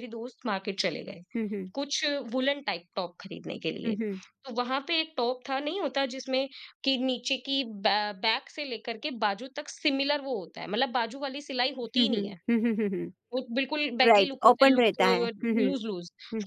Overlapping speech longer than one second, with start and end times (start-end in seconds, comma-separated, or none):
14.1-15.7